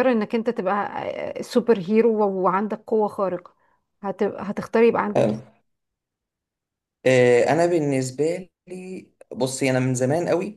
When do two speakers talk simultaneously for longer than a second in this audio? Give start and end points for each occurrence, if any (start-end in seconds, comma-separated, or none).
none